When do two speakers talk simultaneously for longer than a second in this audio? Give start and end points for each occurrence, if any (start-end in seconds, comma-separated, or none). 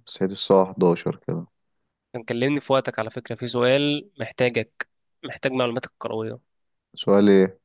none